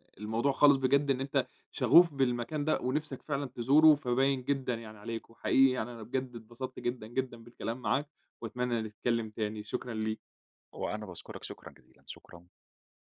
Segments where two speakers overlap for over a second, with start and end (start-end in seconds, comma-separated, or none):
none